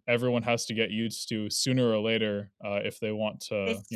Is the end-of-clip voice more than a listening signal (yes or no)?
yes